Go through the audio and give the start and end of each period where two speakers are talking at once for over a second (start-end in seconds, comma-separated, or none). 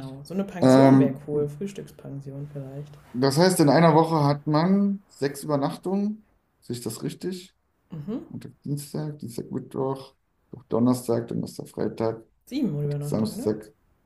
none